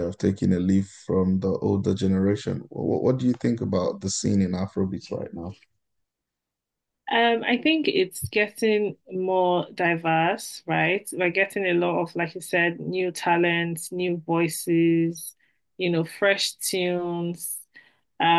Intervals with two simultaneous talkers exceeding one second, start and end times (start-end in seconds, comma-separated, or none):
none